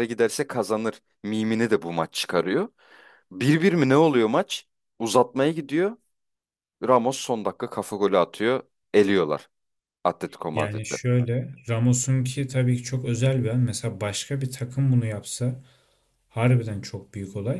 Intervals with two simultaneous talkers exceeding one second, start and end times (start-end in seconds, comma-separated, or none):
none